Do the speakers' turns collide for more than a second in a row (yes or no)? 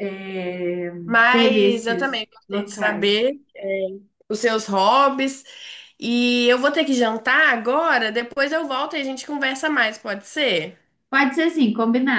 yes